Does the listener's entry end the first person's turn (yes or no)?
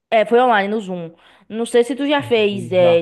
no